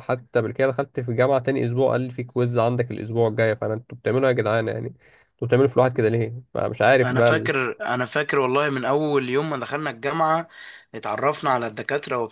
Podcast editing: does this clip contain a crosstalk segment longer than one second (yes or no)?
no